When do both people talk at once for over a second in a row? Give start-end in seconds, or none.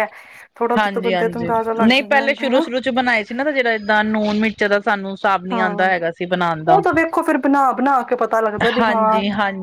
none